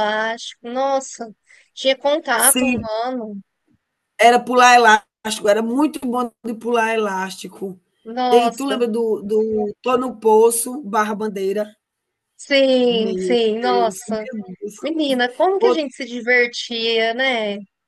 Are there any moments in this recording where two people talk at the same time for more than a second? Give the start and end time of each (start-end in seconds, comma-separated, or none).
12.9-14.3